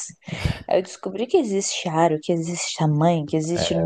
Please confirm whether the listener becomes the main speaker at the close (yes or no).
yes